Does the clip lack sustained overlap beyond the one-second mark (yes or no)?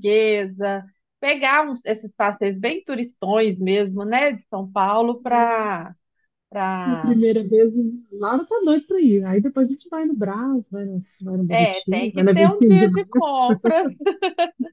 no